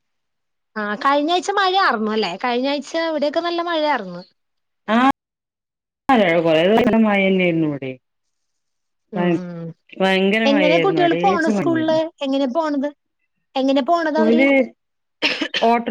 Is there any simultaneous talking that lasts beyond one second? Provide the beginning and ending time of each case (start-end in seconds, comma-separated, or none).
10.5-12.0